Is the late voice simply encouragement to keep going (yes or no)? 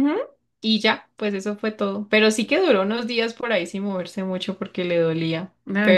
no